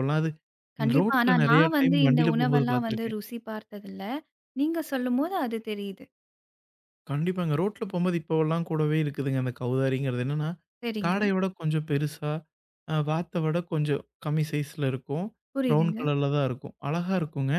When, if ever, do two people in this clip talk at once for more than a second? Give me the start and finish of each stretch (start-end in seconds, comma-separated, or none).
1.0-3.2